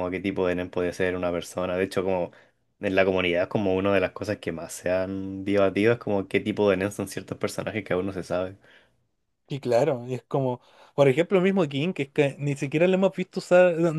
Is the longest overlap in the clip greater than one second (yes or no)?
no